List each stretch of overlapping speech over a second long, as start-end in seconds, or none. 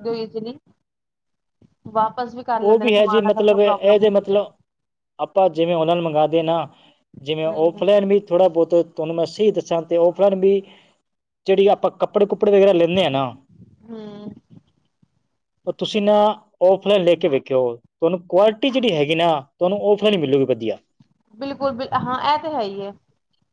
2.6-4.5